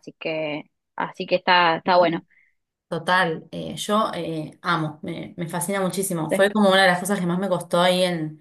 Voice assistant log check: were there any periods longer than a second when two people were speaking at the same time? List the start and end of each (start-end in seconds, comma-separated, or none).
none